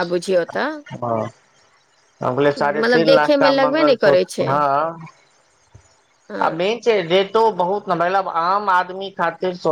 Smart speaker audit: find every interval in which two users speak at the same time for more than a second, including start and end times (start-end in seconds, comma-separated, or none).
2.6-4.5